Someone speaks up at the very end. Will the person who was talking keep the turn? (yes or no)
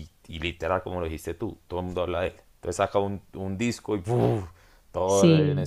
yes